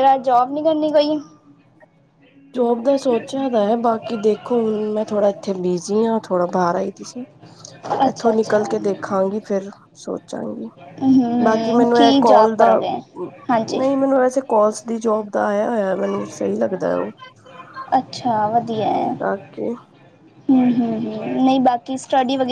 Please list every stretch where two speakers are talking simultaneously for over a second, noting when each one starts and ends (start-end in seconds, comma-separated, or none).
11.4-12.7